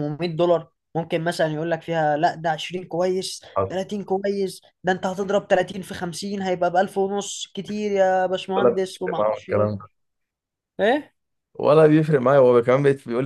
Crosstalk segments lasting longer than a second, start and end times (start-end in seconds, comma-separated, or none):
8.6-9.8